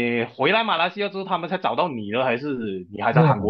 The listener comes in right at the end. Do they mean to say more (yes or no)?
yes